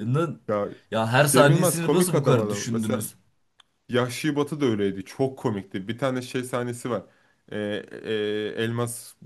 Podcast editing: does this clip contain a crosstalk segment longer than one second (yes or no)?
yes